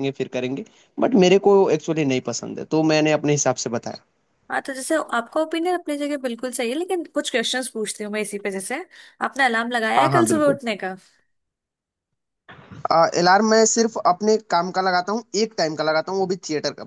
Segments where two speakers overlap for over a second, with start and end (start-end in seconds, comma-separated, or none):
none